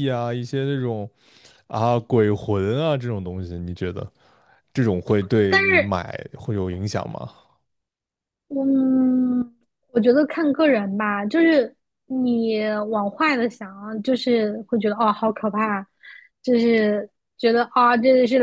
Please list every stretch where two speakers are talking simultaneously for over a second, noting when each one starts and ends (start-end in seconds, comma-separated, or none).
none